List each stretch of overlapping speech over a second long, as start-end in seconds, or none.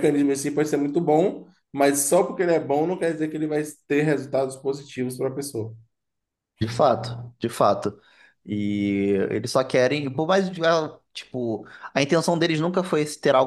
none